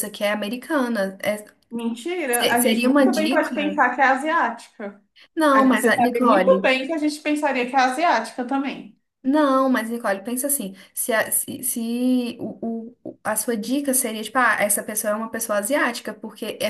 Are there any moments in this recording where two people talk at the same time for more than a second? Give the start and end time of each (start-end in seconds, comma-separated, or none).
2.3-3.8, 5.5-6.7